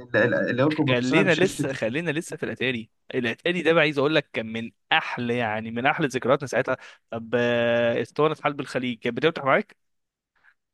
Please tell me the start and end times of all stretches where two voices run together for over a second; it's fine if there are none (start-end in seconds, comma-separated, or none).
0.9-2.1